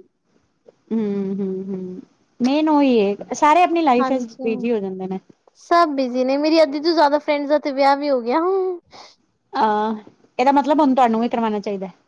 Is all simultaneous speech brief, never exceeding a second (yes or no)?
yes